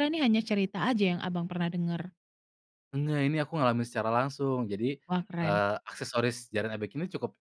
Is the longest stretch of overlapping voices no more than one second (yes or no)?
yes